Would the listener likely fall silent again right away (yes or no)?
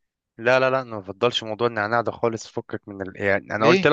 yes